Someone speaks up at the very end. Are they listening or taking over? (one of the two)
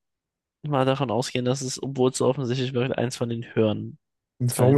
taking over